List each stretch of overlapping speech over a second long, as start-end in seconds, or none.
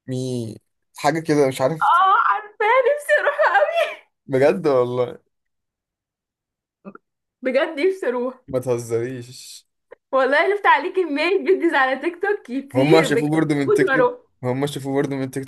12.7-14.2